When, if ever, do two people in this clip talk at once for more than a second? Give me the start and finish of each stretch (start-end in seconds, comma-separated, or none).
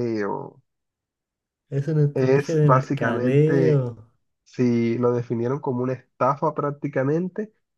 2.1-3.9